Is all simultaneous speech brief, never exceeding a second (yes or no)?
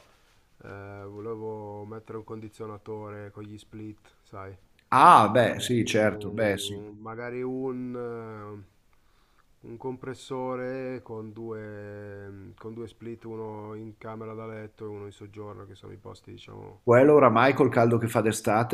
no